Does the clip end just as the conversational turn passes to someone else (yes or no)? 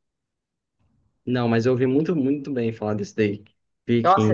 yes